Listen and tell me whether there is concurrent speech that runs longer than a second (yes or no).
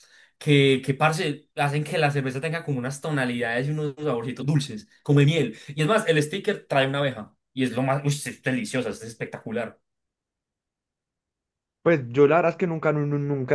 no